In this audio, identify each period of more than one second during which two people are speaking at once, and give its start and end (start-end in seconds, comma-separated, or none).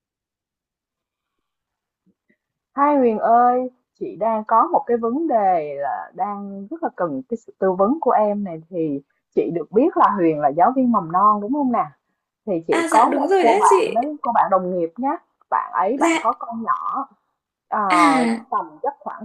12.7-14.0